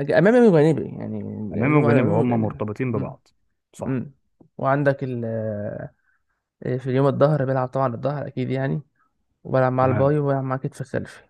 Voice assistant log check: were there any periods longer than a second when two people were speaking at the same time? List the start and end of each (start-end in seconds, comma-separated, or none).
1.7-3.2